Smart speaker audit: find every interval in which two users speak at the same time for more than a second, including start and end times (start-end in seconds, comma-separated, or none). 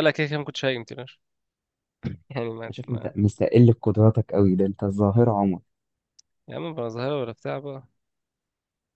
none